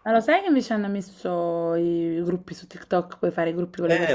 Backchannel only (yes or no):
no